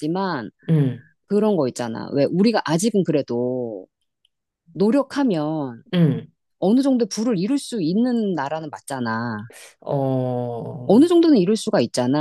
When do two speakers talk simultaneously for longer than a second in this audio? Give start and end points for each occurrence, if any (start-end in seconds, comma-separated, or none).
none